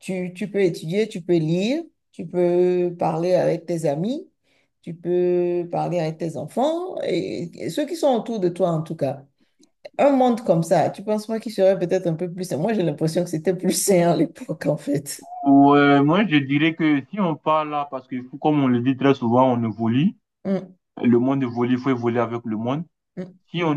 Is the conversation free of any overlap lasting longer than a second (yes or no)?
yes